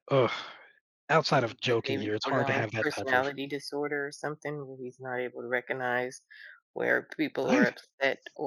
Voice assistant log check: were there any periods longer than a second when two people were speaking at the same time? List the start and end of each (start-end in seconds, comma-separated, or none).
1.3-3.3